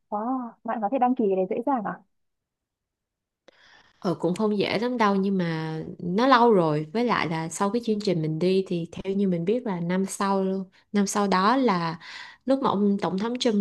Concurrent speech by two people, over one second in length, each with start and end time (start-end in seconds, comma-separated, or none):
none